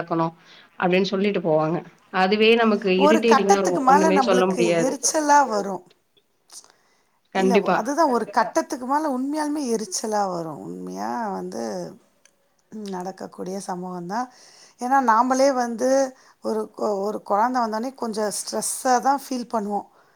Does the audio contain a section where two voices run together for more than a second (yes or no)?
yes